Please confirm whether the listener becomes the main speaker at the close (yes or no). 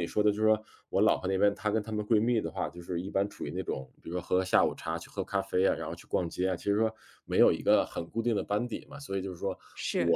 no